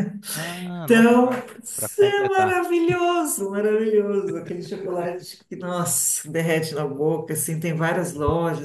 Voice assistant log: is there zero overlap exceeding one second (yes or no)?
no